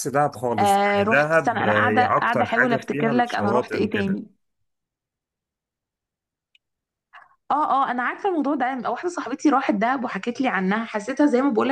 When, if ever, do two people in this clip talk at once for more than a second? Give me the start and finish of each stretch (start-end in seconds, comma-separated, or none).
0.6-4.2